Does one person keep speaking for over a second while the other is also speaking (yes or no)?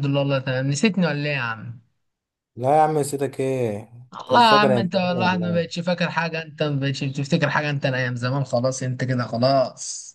yes